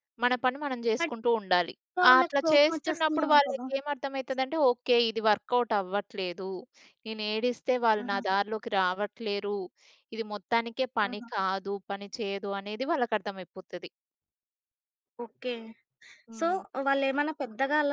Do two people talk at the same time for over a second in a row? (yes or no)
yes